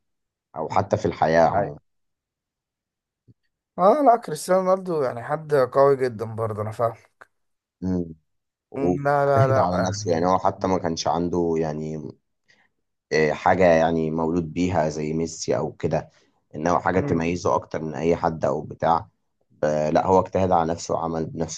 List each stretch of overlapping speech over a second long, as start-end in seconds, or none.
8.8-10.3